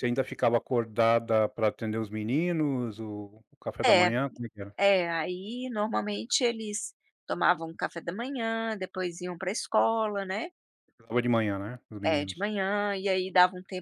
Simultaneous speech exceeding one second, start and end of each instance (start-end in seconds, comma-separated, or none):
none